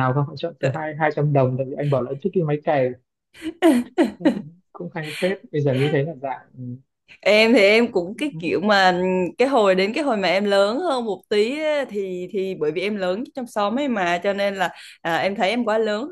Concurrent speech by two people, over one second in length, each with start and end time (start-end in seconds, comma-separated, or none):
none